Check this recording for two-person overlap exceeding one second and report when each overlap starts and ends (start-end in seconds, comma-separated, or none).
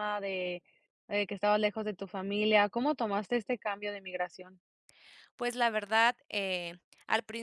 none